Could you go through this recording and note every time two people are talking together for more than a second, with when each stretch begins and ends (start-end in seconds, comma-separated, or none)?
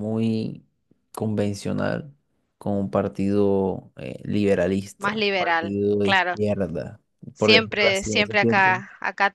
5.0-6.3, 7.4-8.8